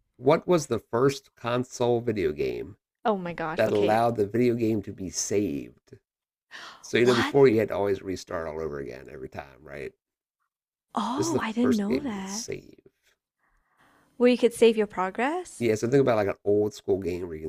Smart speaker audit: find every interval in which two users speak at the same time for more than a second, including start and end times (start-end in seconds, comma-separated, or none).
11.1-12.4